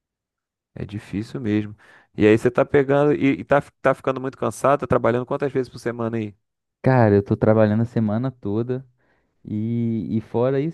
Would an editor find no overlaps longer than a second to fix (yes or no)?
yes